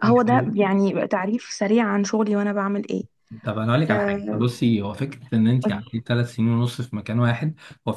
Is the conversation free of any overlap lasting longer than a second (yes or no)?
yes